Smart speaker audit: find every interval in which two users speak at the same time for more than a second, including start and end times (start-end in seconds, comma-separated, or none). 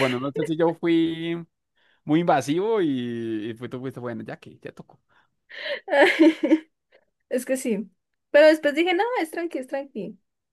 none